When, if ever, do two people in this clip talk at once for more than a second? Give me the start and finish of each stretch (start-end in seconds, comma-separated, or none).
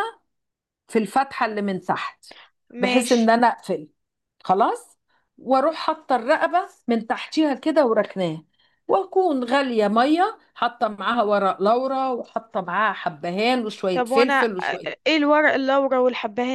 none